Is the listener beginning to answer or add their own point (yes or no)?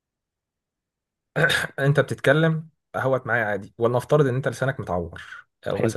no